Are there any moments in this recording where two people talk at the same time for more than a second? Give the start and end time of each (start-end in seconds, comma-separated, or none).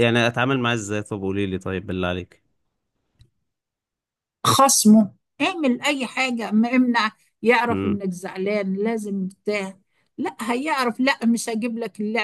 none